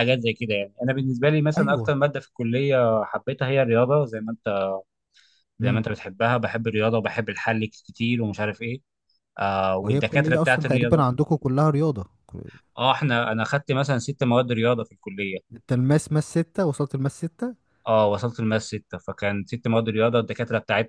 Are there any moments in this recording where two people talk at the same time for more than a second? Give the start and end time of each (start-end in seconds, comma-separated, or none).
9.8-11.1